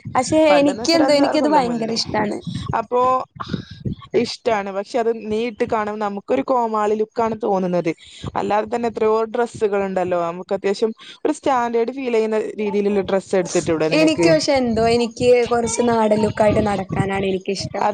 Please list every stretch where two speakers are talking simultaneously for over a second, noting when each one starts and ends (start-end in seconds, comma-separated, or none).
0.5-2.0